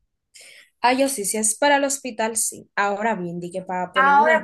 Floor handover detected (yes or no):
yes